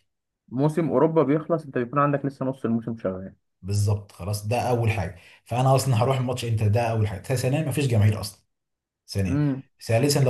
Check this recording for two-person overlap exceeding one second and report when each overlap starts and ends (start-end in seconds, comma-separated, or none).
none